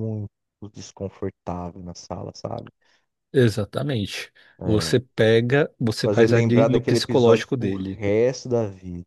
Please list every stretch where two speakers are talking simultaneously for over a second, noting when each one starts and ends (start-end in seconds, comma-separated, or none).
6.0-8.0